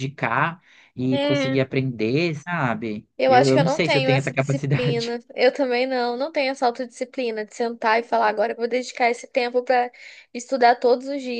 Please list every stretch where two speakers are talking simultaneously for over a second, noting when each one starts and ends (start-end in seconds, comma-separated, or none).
3.2-5.2